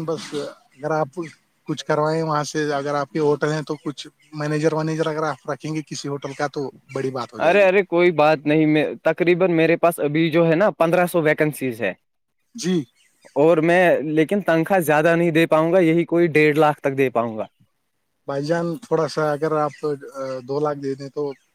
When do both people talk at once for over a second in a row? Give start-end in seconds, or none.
none